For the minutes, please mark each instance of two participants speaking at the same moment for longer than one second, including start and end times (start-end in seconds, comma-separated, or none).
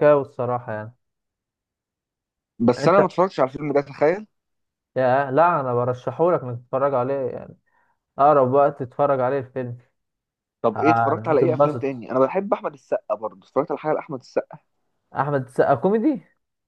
10.8-12.0